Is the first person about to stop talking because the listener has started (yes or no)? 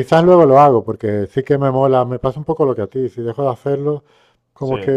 no